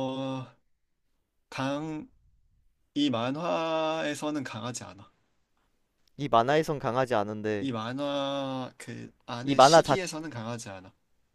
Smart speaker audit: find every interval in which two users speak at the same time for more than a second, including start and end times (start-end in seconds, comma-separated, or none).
none